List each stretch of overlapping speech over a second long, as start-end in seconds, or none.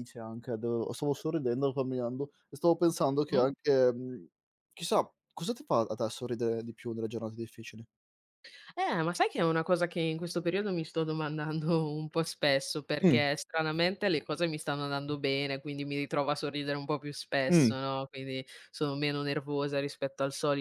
none